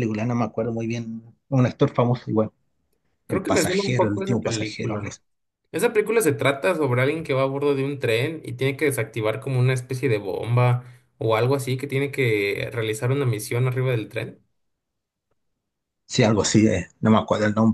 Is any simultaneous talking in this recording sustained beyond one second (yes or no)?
yes